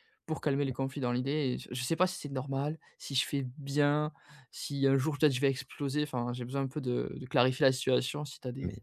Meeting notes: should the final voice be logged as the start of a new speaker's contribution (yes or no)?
yes